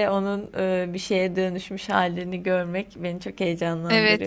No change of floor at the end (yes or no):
no